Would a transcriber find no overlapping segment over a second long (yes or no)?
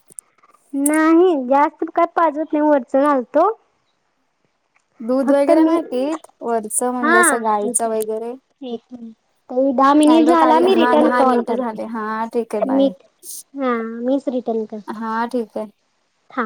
no